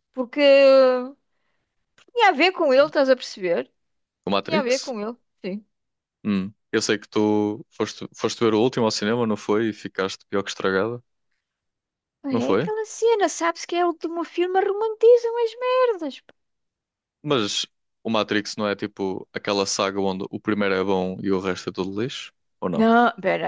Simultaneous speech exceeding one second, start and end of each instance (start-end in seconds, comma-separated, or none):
none